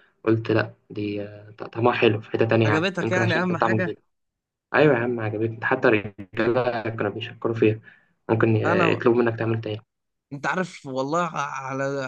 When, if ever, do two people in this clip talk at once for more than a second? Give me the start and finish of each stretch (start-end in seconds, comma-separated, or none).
2.6-3.9